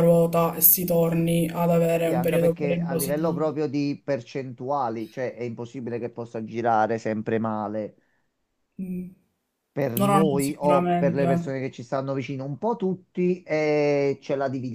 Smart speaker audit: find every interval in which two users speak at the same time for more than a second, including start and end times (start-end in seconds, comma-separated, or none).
2.0-3.5, 10.0-11.2